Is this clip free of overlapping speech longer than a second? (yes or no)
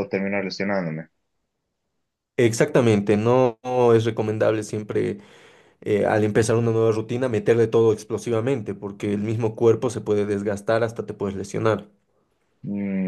yes